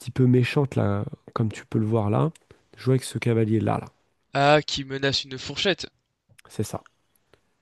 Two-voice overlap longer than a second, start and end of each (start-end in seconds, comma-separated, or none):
none